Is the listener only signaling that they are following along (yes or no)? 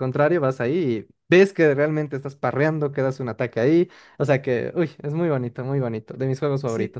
no